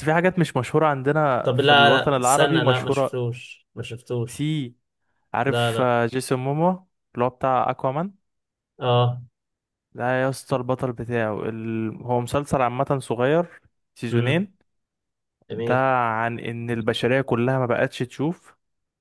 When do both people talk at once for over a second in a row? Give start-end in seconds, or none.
1.4-3.2